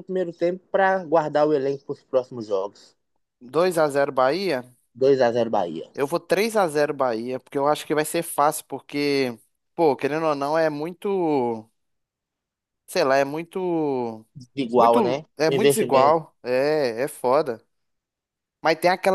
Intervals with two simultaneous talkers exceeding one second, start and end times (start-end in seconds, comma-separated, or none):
14.8-16.2